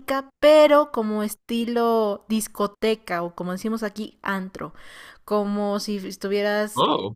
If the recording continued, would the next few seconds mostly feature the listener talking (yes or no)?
yes